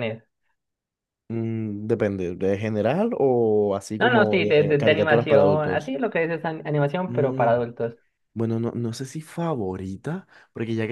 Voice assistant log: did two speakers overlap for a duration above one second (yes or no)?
yes